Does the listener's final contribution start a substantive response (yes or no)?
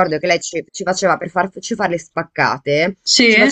no